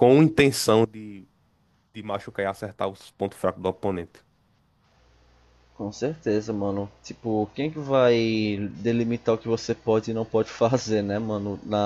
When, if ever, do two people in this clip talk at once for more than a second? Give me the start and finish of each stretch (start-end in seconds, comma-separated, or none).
none